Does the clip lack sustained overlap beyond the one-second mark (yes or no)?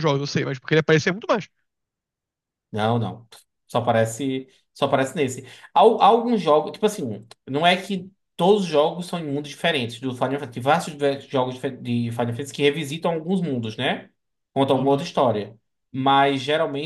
yes